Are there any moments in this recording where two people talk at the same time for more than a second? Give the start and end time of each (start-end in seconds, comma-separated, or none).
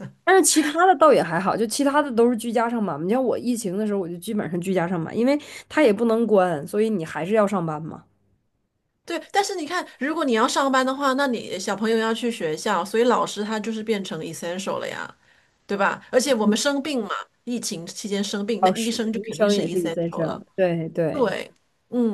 18.6-20.4